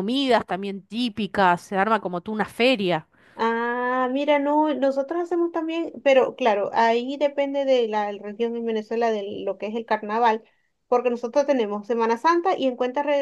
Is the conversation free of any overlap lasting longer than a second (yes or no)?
yes